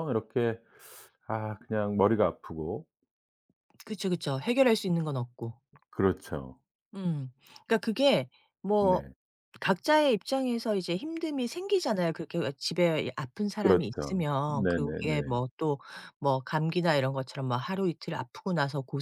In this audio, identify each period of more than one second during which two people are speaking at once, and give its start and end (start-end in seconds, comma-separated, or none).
13.6-15.4